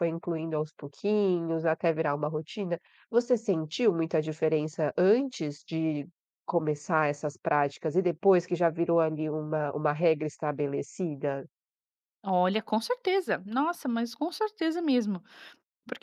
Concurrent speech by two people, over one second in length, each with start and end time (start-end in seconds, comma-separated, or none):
none